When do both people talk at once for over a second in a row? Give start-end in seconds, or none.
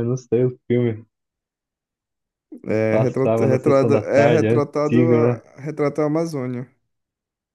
2.9-5.4